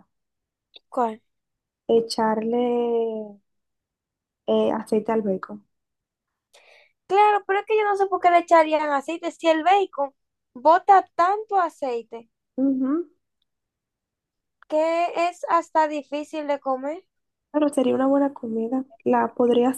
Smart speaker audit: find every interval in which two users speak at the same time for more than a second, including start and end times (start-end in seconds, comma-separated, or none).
none